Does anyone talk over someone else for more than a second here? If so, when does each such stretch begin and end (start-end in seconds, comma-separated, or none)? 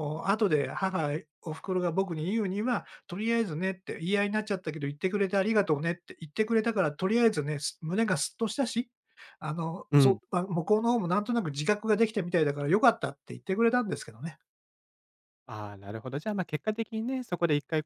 none